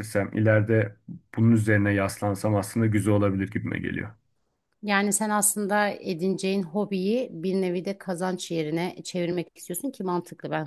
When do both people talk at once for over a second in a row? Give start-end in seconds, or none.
none